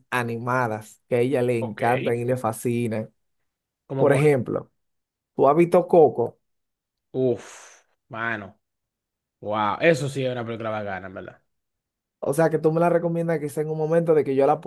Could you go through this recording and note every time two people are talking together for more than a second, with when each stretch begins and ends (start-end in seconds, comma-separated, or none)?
none